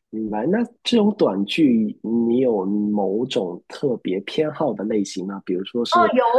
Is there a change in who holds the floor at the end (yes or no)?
yes